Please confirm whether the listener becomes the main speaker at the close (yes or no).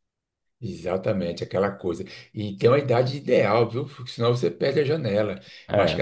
no